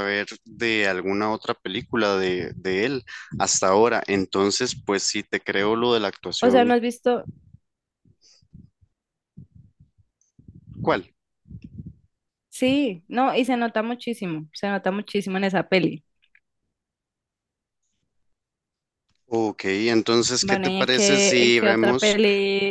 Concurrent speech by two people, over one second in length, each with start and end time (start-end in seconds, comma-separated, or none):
20.4-22.2